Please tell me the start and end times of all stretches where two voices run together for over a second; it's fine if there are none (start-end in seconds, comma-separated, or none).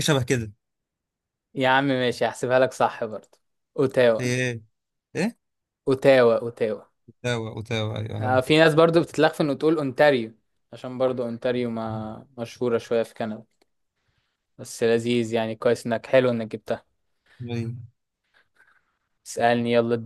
none